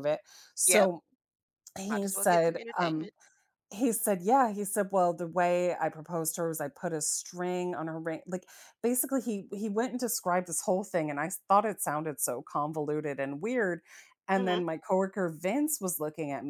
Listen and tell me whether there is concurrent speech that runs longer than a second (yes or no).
yes